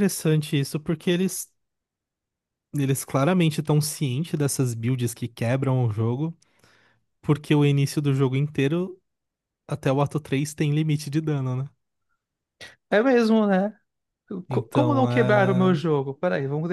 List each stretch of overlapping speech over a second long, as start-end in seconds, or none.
14.5-15.8